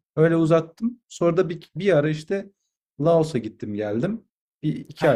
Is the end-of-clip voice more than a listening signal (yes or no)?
yes